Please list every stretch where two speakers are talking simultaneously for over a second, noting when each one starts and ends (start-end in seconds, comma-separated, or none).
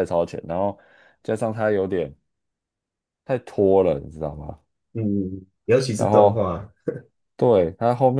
none